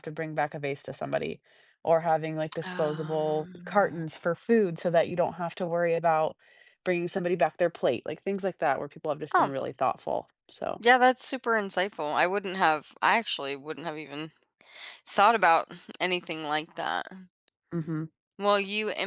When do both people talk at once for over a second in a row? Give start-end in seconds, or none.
2.6-4.1